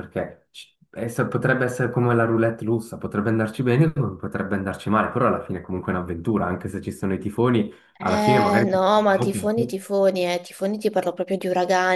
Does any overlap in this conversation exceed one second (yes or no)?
yes